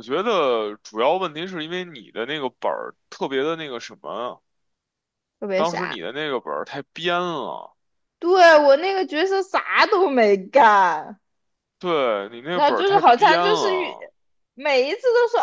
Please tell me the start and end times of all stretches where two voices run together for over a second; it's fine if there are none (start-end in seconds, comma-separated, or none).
12.5-14.0